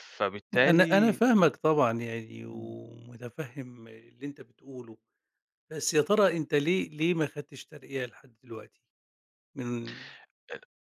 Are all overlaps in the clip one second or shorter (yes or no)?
yes